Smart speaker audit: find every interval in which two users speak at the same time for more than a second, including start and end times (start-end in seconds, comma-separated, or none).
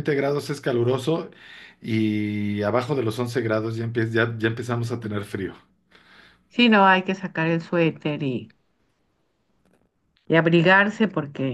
none